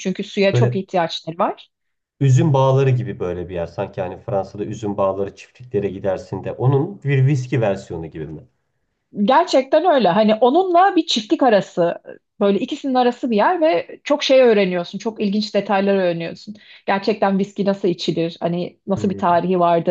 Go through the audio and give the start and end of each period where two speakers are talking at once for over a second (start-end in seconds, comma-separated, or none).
none